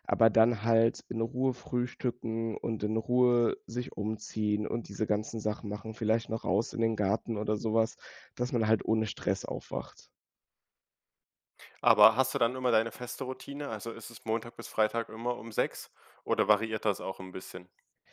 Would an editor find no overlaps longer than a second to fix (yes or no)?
yes